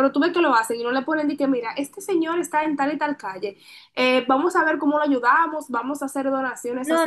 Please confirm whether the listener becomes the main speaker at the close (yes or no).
yes